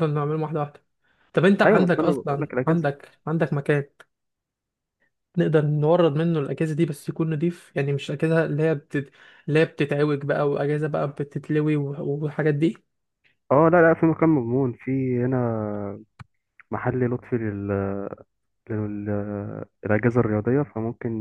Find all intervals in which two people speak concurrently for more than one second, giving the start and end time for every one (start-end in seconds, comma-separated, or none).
1.6-2.9